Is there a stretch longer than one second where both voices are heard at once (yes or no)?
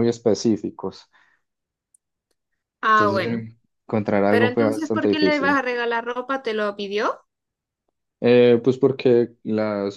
yes